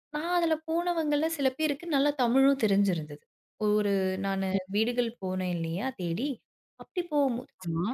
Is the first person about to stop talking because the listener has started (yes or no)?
no